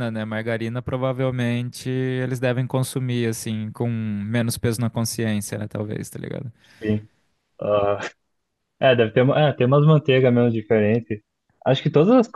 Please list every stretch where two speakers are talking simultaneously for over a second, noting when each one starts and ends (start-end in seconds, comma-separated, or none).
none